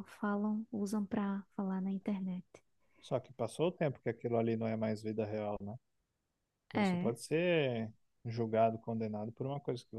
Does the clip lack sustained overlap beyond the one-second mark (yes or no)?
yes